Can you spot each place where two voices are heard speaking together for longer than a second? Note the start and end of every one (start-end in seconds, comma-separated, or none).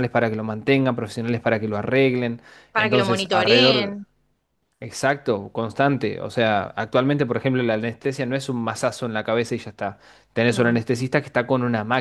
2.7-4.0